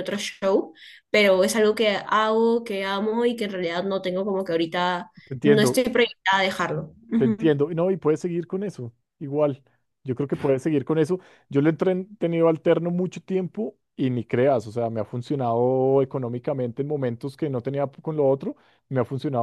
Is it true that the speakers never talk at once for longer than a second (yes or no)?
yes